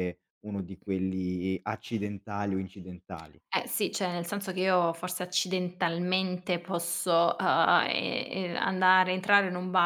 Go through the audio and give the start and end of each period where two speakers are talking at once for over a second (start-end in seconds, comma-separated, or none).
none